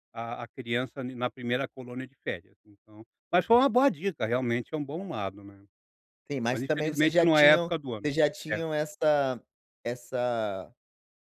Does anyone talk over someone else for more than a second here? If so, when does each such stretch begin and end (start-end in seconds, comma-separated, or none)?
6.5-8.1